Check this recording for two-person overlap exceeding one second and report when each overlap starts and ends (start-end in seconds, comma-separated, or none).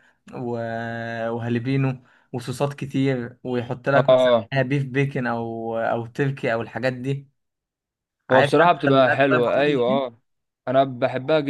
8.3-10.1